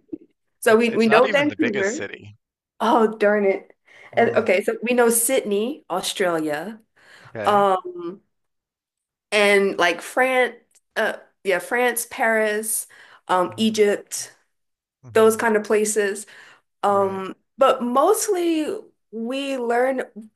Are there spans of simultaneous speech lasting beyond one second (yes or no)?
yes